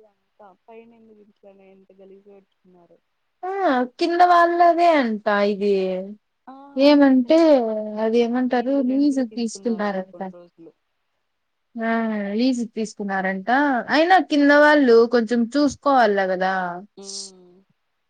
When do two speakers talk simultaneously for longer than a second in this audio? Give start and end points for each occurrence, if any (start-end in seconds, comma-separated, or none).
8.5-10.2